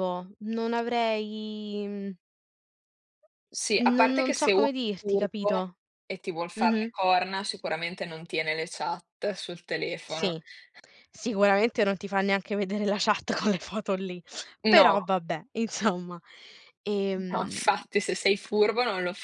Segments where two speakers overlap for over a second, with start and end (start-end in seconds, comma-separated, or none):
4.0-5.6